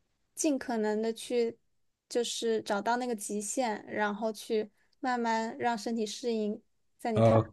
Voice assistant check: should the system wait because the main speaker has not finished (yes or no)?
no